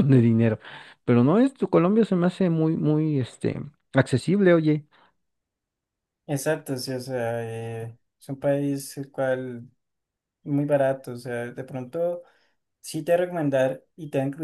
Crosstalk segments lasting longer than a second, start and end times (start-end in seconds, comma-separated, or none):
none